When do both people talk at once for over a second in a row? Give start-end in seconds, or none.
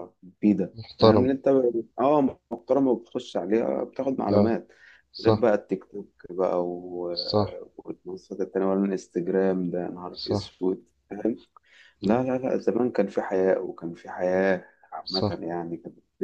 none